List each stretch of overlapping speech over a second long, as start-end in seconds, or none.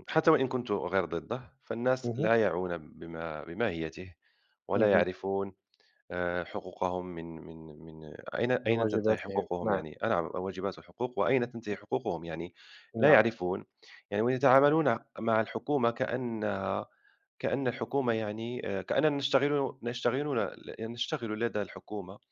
8.6-9.8